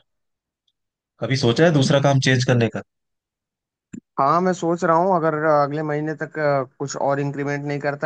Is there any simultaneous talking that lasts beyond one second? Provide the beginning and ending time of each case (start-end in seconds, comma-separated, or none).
none